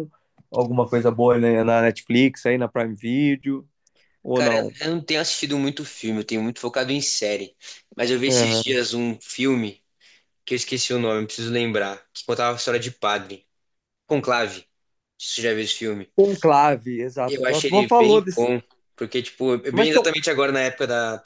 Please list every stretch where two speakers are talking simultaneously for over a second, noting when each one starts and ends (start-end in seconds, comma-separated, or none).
17.3-18.5